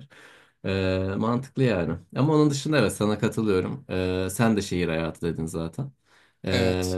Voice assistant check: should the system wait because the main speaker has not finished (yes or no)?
yes